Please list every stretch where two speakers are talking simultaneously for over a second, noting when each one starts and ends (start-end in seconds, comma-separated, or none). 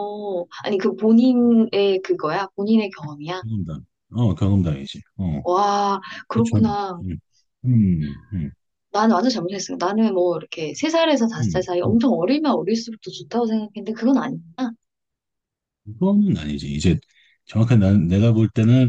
none